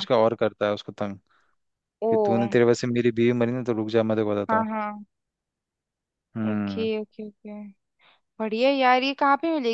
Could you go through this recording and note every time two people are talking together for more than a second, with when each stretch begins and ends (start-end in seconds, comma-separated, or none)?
none